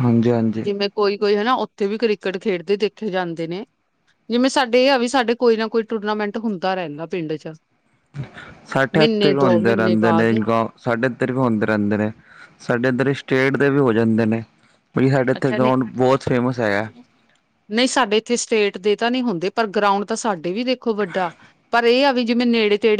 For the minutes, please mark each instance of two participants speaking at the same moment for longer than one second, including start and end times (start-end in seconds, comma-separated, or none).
8.9-10.4